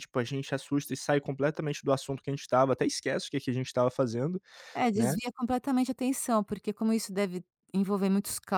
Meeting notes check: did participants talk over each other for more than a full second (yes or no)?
no